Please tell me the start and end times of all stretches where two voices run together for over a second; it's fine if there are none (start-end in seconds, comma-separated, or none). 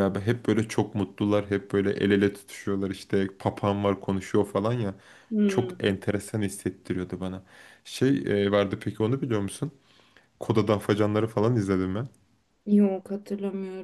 none